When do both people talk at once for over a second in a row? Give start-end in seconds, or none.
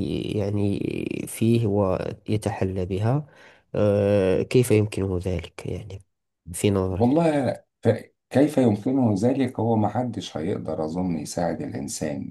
none